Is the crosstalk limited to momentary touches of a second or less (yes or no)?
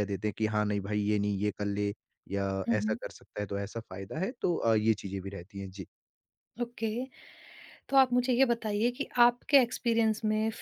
yes